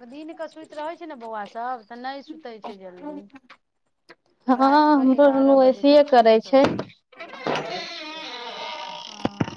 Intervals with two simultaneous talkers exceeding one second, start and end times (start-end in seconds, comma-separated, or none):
4.6-6.6